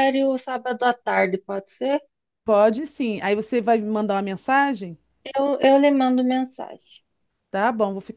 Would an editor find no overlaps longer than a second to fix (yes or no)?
yes